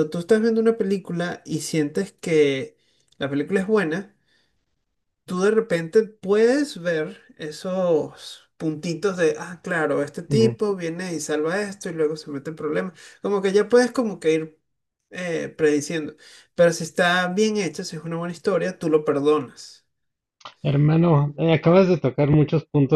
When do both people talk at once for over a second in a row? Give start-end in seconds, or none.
none